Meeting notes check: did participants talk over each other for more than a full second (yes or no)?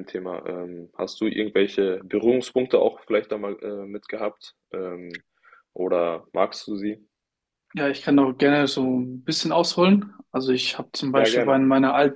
no